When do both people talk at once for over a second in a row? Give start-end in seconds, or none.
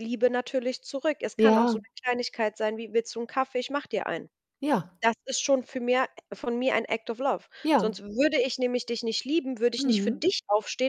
none